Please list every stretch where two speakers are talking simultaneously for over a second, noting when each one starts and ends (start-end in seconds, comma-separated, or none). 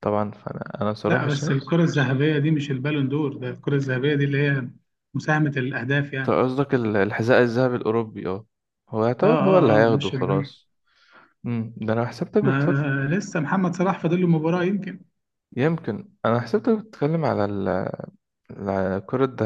9.2-10.5